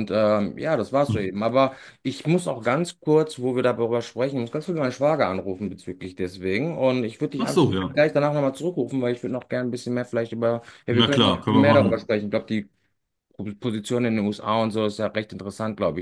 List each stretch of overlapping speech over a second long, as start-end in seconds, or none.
10.9-12.1